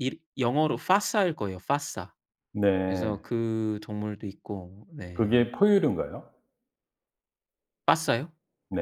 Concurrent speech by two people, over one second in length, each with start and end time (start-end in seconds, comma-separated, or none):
none